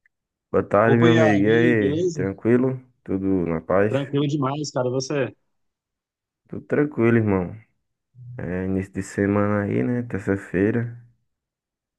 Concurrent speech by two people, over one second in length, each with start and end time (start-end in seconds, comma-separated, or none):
0.8-2.2